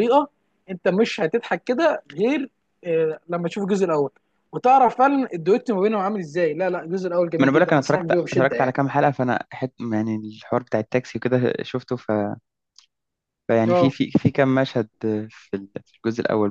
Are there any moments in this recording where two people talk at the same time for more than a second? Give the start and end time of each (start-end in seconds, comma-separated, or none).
7.4-8.8